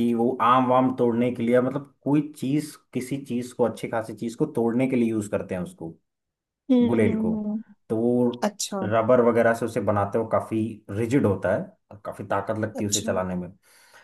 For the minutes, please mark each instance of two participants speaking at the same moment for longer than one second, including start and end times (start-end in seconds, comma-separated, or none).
none